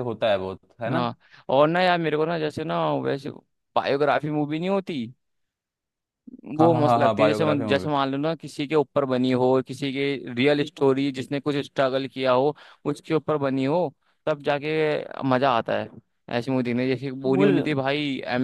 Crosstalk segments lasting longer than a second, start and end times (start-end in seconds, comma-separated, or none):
6.6-7.9